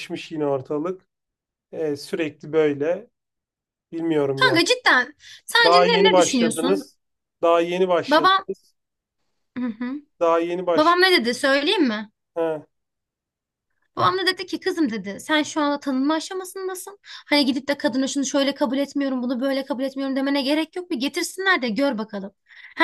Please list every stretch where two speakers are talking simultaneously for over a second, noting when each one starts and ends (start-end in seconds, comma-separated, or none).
5.6-6.9